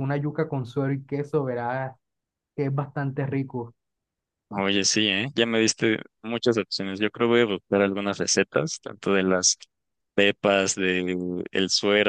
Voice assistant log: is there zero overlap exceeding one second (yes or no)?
yes